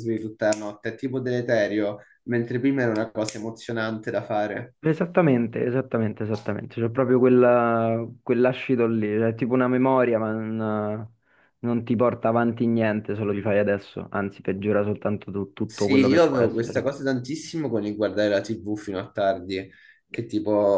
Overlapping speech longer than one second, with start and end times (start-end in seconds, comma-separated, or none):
15.6-16.9